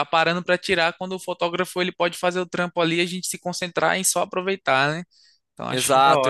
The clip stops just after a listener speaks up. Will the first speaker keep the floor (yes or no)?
no